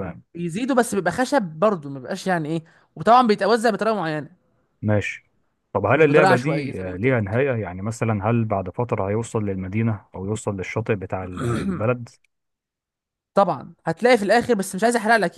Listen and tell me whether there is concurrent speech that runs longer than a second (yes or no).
yes